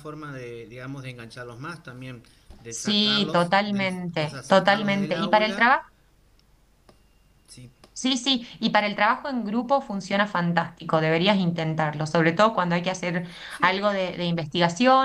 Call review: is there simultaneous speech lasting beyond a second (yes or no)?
yes